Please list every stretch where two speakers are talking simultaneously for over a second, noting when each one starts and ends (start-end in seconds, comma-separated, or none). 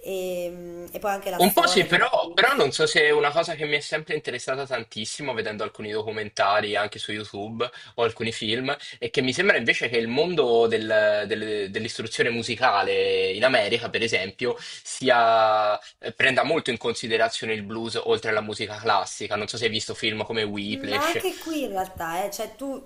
1.4-2.6